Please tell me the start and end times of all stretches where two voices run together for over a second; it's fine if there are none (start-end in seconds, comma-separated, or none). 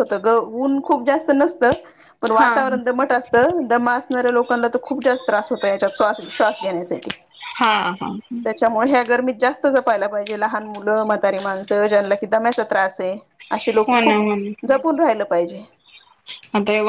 none